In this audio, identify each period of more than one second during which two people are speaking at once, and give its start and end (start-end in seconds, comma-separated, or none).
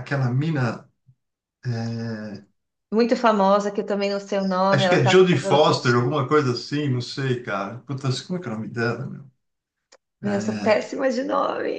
4.7-6.2